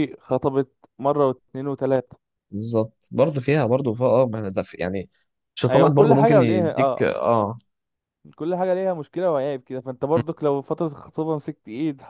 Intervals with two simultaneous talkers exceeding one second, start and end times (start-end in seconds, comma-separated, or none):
5.7-7.1